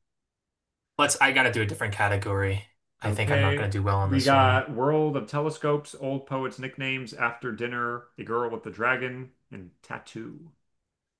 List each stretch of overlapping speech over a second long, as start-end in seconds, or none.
3.0-4.6